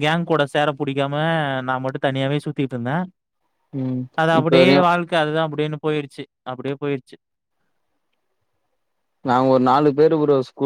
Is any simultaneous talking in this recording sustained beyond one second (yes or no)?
no